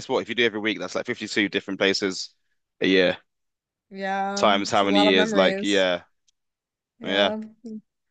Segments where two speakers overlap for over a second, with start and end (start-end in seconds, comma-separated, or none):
4.3-5.8